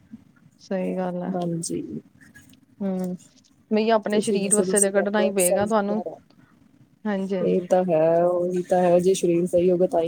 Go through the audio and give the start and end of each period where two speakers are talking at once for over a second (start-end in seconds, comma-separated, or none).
4.1-6.0